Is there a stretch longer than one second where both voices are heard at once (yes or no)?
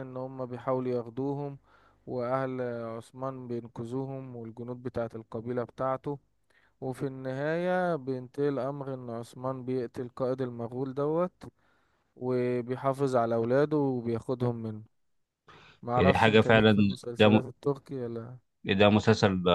yes